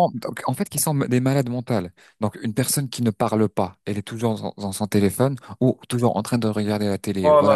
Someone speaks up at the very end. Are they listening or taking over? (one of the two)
listening